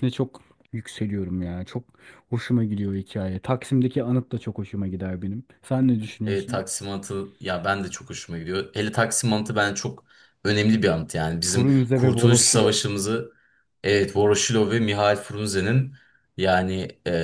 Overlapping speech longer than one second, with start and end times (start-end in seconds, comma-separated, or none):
11.4-12.8